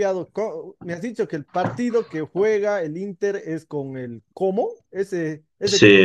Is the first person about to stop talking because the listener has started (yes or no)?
no